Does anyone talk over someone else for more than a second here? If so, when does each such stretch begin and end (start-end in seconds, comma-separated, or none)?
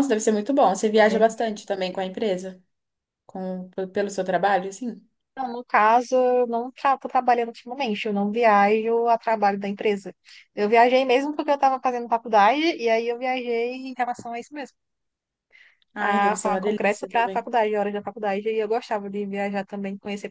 16.0-17.5